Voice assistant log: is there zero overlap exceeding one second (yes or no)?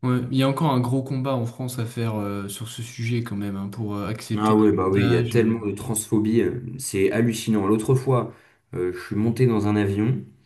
no